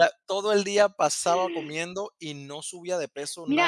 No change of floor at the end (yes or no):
no